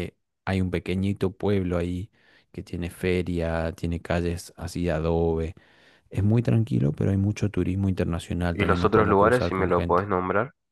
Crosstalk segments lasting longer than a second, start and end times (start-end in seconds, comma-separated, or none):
8.5-10.1